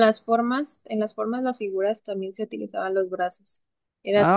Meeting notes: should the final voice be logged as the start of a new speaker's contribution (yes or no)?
yes